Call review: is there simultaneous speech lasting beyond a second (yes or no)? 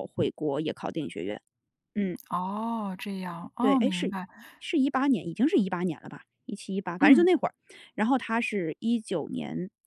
no